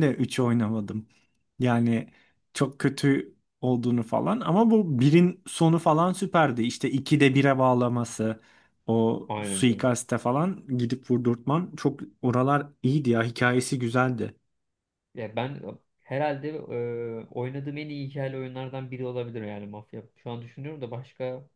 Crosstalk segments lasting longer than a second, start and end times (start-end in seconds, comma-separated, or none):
none